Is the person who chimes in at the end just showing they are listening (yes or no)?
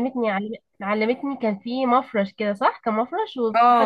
no